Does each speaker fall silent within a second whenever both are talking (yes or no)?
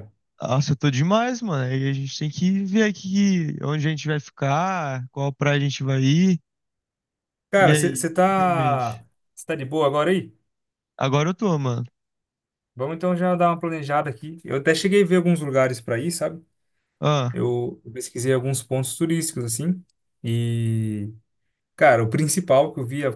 no